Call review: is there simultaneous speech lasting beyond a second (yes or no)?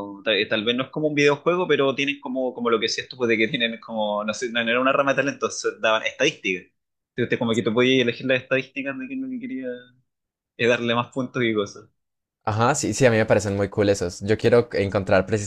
no